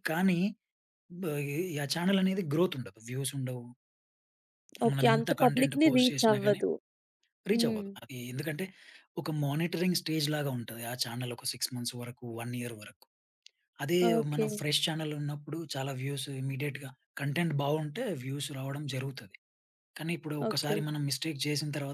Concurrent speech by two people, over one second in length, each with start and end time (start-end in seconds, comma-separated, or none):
4.9-6.6